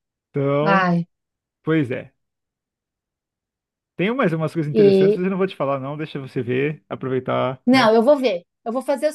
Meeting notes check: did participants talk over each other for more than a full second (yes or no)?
no